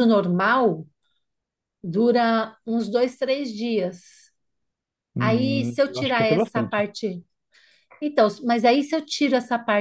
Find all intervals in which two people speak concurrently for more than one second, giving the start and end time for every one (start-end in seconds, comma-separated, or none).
5.2-6.9